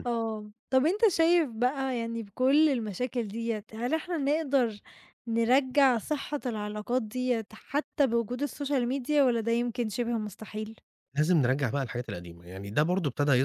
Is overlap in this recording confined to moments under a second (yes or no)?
yes